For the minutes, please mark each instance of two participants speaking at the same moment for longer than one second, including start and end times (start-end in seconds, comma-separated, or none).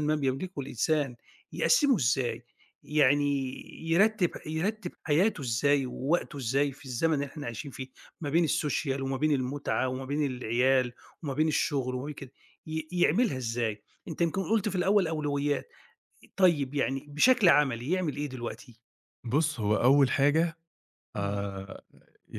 none